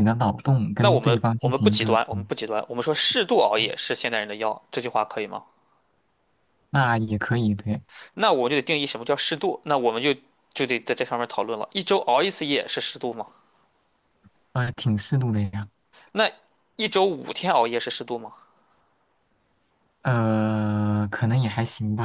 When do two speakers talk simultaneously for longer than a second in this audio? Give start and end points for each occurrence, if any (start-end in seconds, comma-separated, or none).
0.8-2.3